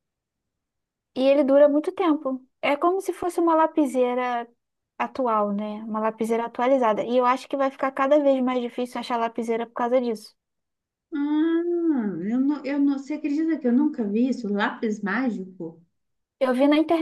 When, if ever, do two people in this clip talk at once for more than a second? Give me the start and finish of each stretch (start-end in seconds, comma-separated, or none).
none